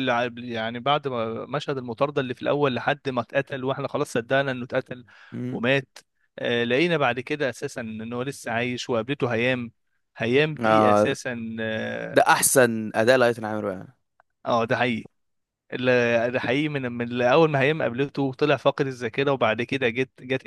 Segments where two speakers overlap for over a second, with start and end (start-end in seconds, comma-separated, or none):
none